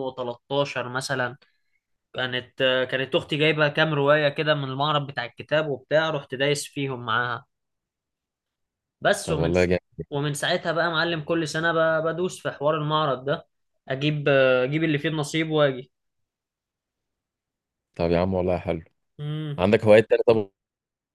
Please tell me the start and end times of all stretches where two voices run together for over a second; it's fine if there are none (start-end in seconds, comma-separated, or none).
none